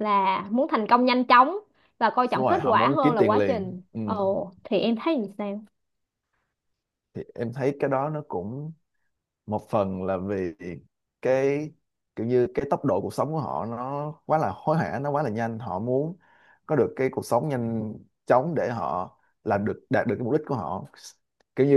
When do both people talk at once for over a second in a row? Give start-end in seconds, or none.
2.3-4.0